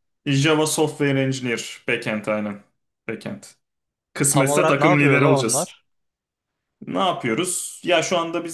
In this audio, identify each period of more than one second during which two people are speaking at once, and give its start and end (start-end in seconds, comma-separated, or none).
4.3-5.8